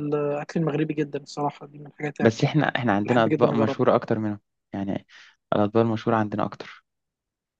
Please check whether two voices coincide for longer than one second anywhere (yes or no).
yes